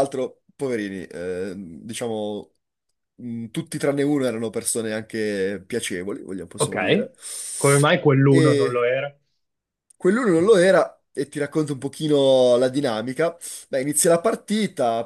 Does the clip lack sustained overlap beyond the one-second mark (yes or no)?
yes